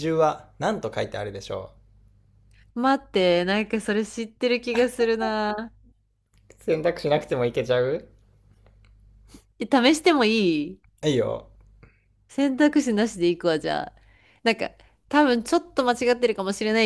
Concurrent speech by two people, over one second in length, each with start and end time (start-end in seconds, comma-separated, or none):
none